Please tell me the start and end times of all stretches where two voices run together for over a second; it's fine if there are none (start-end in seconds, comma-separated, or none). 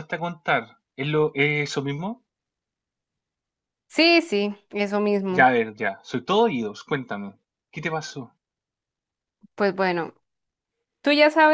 none